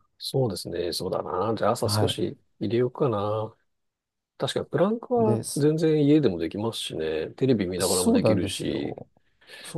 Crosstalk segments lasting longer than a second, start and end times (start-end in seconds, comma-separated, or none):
7.8-9.0